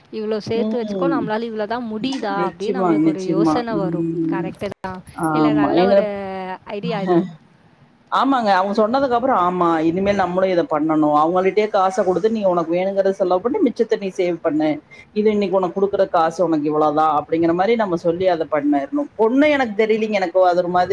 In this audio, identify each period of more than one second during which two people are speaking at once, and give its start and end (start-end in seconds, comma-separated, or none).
2.4-4.5